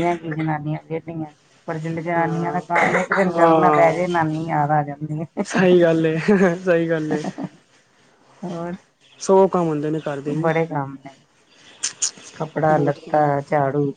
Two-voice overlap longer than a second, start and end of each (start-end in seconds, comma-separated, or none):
none